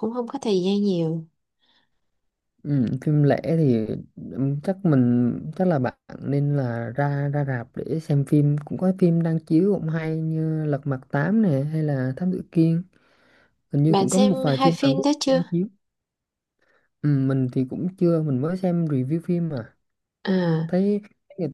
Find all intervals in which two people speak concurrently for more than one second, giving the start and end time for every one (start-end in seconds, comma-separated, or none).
13.9-15.4